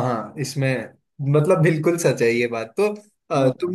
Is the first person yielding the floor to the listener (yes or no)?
no